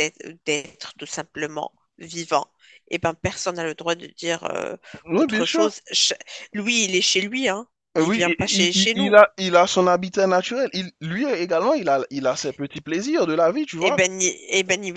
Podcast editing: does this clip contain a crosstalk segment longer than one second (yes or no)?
yes